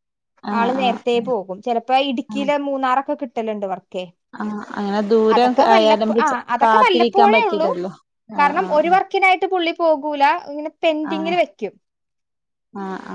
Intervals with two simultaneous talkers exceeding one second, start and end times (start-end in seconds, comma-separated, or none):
5.3-7.7